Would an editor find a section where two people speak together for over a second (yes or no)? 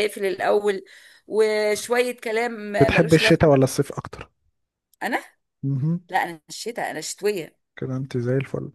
no